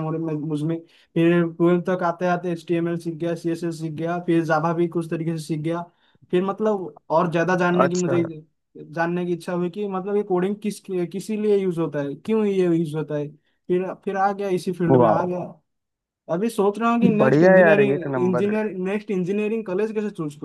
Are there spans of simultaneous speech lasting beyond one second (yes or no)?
yes